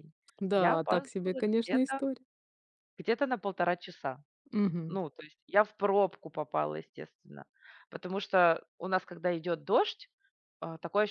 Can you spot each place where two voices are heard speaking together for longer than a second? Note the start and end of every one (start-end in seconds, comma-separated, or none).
0.5-2.0